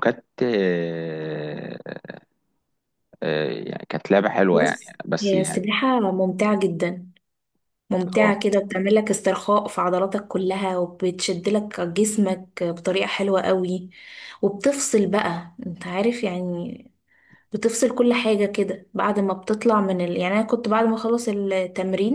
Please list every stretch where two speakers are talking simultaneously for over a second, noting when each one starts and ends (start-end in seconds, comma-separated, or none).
4.5-5.8